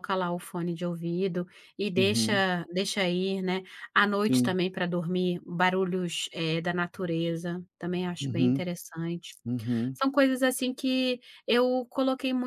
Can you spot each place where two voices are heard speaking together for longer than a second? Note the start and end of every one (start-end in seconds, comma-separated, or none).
none